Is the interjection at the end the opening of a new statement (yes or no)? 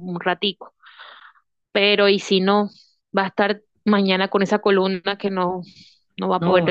yes